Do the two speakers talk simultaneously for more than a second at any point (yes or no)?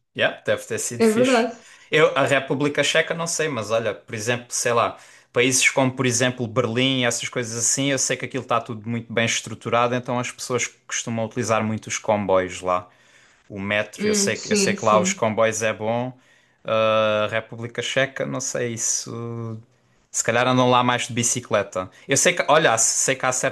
yes